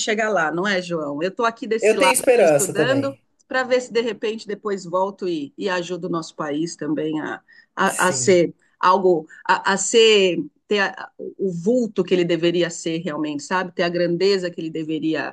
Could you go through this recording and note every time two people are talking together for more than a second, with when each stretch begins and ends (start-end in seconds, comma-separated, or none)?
1.8-3.2